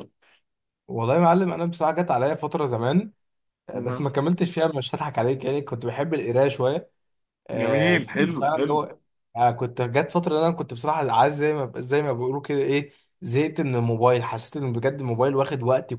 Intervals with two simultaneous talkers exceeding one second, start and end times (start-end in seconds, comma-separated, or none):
7.5-8.8